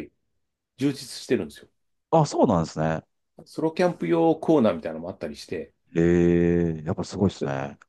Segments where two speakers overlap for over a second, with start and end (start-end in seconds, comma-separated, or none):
none